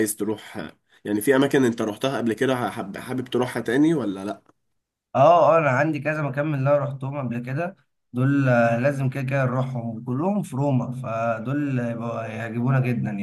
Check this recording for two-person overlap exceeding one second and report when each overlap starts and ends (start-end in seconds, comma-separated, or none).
none